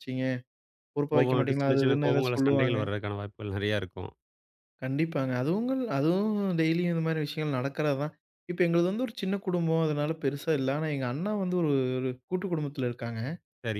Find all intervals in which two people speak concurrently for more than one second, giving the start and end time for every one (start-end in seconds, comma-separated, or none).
1.1-2.8